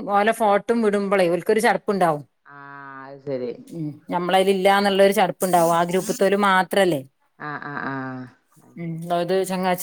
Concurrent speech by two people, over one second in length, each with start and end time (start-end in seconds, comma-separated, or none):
none